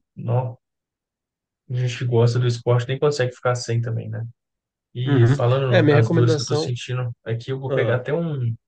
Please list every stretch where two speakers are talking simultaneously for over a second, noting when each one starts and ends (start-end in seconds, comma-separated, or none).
5.0-6.7